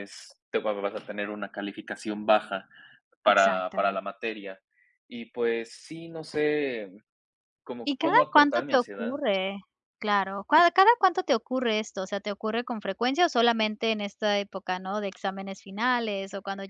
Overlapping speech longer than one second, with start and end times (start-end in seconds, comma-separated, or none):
7.8-9.2